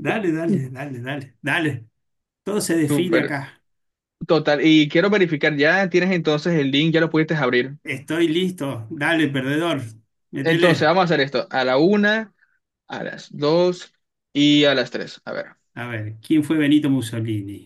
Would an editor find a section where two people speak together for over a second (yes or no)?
no